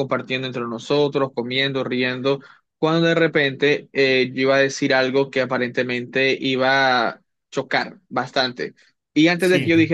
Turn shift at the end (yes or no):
no